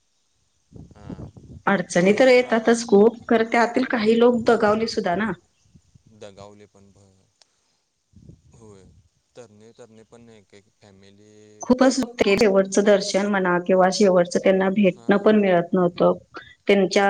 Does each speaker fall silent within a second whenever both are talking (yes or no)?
yes